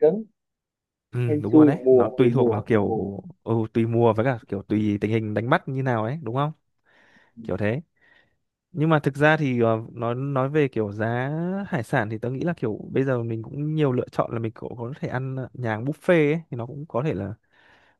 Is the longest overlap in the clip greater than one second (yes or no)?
yes